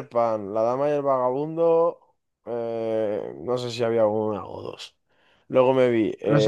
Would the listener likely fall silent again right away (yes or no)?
yes